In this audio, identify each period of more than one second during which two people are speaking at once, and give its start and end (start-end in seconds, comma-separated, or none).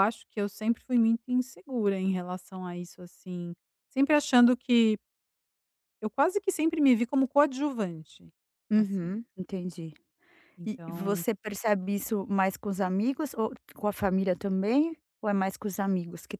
none